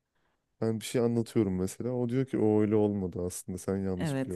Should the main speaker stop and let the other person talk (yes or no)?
yes